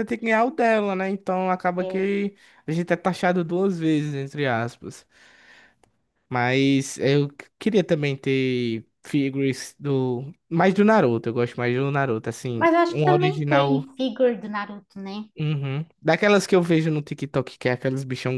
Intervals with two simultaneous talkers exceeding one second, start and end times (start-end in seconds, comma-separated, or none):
12.6-13.8